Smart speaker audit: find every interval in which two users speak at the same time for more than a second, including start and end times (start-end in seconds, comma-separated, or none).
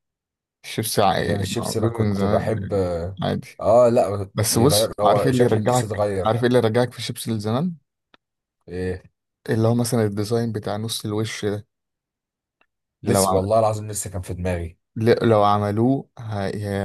1.2-2.7, 4.3-6.3